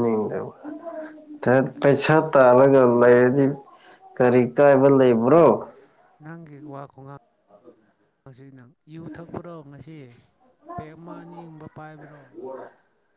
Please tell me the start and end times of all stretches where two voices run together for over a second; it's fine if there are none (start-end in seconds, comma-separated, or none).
none